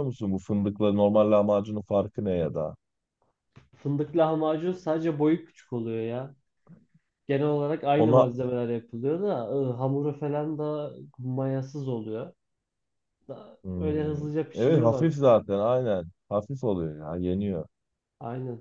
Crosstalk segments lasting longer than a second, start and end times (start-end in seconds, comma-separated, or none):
13.6-15.1